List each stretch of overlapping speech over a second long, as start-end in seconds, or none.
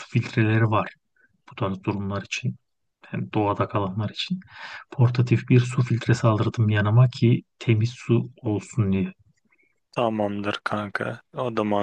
none